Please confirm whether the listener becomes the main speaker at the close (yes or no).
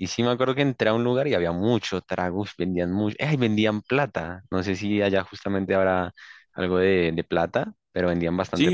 yes